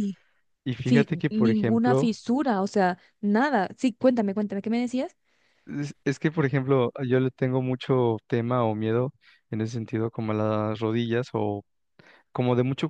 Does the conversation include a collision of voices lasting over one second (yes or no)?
yes